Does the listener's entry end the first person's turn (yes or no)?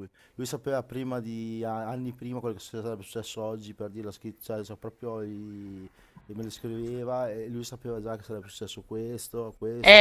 yes